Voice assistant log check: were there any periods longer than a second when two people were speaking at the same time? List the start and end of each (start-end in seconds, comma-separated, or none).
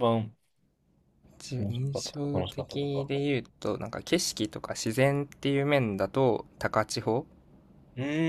1.6-3.1